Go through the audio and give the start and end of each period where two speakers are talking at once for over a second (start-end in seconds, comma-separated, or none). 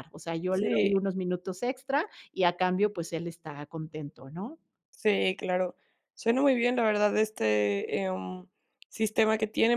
none